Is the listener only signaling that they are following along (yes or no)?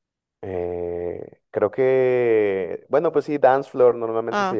no